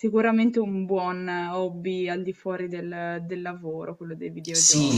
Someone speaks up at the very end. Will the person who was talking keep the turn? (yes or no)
no